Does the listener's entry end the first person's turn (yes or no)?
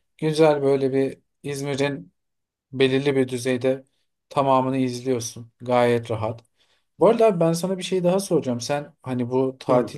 no